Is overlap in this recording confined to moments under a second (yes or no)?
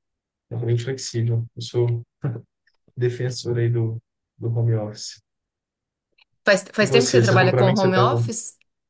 no